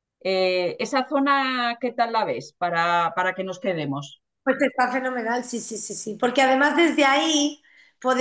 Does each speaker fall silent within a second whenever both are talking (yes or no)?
yes